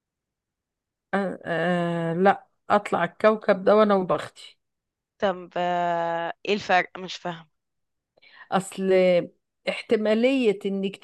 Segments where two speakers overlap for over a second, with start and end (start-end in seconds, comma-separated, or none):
none